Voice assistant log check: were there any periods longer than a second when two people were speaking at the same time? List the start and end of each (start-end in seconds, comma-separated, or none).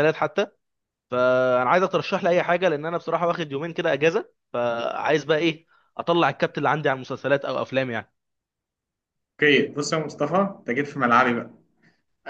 none